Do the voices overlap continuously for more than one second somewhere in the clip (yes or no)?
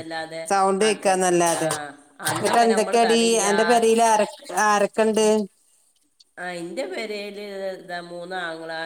no